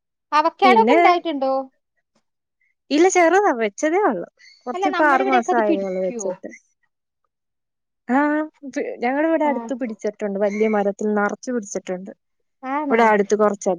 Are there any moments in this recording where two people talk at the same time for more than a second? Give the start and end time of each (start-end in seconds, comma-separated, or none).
4.7-6.3